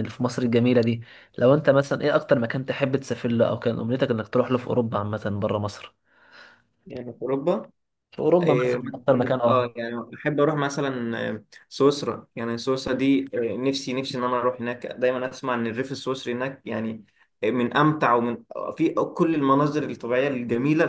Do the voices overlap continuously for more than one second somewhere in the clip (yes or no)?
yes